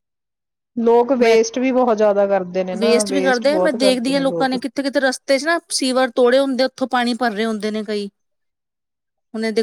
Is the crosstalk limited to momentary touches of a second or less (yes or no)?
no